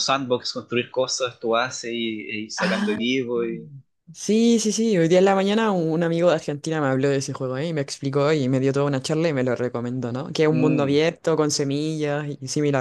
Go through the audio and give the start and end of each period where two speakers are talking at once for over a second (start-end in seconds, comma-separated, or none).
none